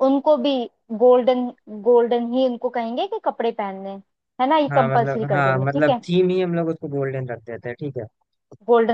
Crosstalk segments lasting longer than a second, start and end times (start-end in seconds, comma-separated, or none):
4.7-6.0